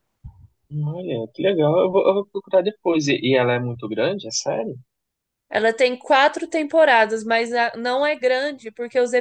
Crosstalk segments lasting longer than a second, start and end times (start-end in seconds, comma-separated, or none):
none